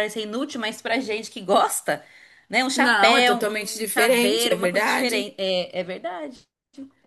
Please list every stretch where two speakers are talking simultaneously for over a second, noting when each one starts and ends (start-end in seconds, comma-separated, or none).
2.7-5.3